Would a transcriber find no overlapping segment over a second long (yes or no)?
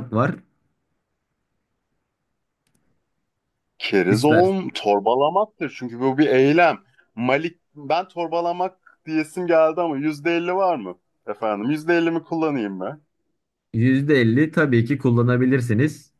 yes